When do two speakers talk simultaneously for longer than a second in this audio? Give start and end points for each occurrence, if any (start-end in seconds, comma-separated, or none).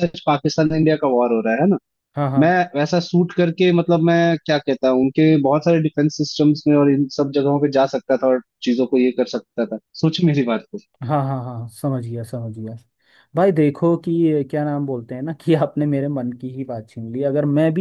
none